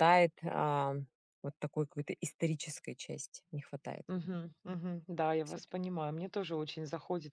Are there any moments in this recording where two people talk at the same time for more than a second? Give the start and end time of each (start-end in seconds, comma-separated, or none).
none